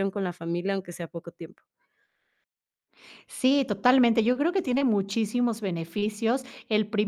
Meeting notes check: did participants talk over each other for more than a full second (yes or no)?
no